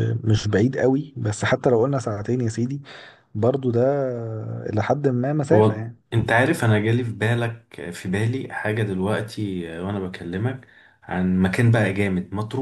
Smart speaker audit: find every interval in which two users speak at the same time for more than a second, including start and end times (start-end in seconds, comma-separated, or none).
none